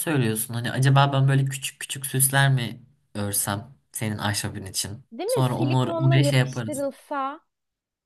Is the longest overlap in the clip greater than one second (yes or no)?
yes